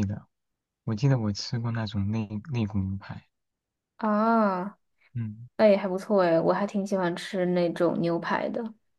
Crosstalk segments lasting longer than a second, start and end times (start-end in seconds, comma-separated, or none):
none